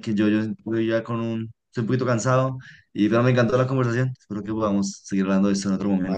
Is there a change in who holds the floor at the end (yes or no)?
yes